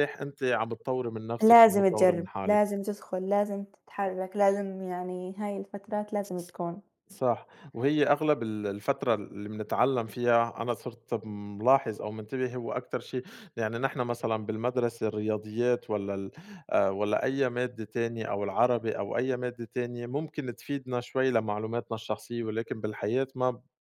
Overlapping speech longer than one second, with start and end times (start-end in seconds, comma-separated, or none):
1.4-2.6